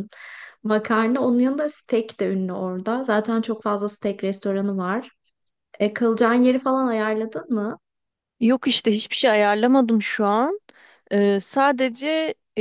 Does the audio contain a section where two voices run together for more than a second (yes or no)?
no